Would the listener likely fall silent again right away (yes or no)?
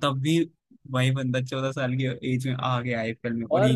no